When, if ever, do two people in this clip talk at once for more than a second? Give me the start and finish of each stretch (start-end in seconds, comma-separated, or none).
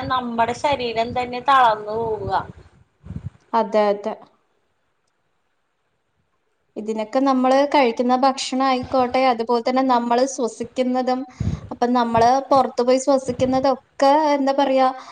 none